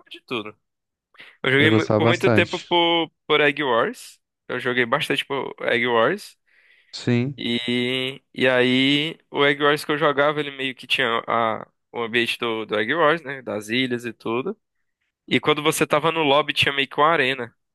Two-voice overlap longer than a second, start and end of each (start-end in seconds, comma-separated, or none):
1.6-2.8